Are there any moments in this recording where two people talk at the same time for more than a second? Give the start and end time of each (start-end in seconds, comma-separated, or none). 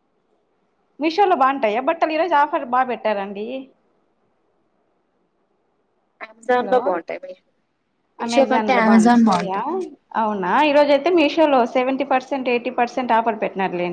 8.2-9.6